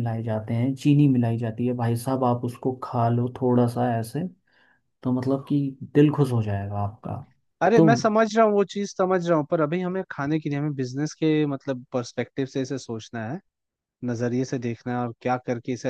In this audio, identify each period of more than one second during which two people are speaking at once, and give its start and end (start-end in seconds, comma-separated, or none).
none